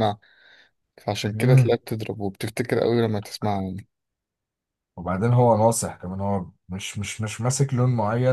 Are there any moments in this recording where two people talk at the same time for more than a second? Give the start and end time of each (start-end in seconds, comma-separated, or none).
none